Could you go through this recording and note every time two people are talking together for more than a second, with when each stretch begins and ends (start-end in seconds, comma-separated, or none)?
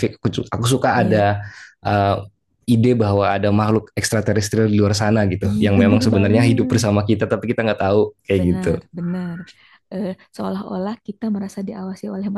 5.5-6.8